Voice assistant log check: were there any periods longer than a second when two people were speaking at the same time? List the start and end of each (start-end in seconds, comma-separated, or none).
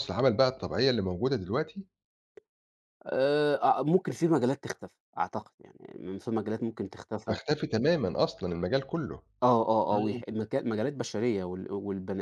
none